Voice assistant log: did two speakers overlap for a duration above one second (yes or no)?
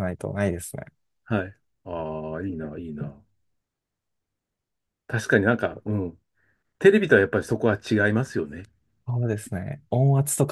no